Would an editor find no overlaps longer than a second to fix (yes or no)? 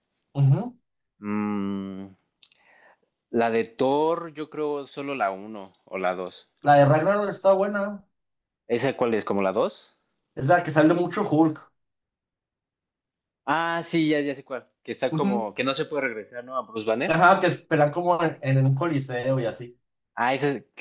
yes